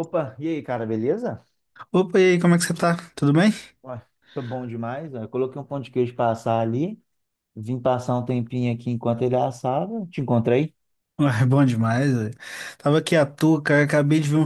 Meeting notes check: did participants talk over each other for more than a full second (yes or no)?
no